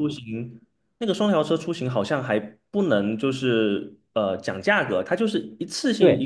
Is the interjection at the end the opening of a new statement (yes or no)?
yes